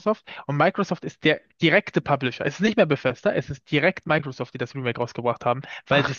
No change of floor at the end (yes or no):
yes